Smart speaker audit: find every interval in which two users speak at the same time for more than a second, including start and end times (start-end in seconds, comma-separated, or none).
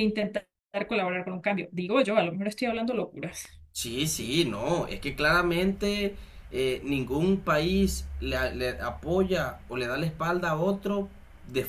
none